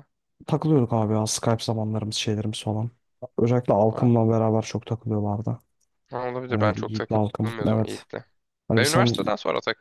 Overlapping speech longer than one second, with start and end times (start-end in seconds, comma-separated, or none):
6.5-8.1